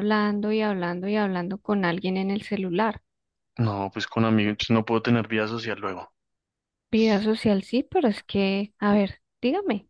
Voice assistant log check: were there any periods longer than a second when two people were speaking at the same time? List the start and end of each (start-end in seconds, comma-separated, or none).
none